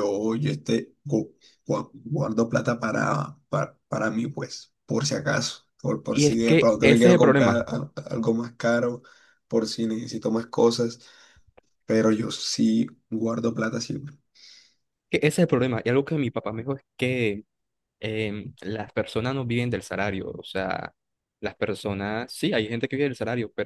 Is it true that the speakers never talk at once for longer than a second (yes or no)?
no